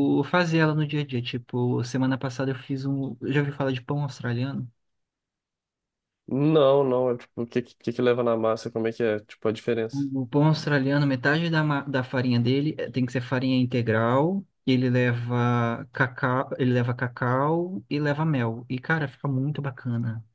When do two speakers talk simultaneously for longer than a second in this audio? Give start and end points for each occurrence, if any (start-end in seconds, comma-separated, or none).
none